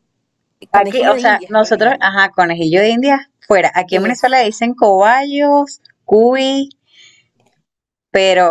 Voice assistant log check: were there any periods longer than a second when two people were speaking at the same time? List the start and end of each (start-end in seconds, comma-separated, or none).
0.7-2.1